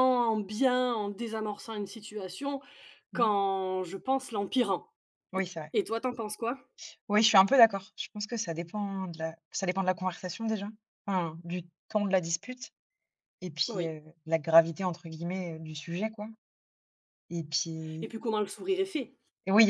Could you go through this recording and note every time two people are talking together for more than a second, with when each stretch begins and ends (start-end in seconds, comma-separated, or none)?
none